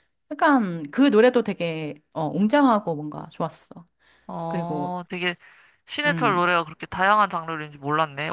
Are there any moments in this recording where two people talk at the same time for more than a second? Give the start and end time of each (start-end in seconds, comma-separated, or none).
none